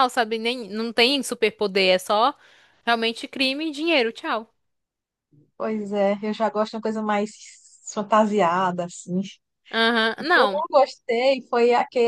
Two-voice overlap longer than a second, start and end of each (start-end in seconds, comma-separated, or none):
none